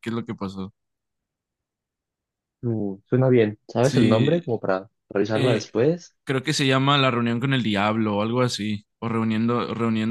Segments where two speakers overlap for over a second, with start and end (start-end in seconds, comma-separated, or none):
none